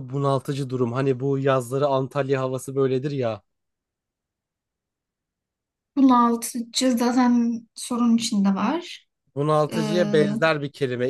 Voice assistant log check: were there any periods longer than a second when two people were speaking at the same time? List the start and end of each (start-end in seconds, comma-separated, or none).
none